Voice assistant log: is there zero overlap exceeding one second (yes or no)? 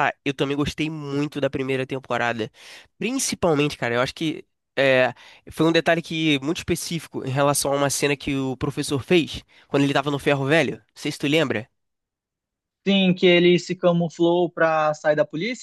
yes